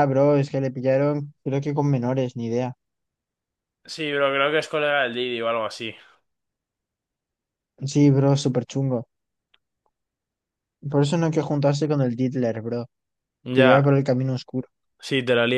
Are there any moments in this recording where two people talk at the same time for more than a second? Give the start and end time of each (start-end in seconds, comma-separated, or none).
none